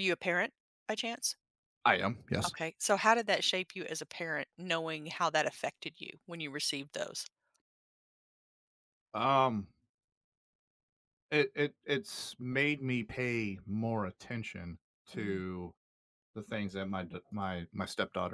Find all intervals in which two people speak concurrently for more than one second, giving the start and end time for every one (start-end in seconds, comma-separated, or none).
none